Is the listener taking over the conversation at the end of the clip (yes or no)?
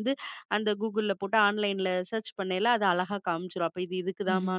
no